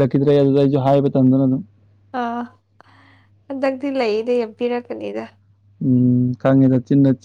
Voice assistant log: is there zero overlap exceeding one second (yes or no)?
yes